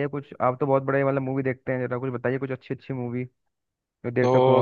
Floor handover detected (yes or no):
yes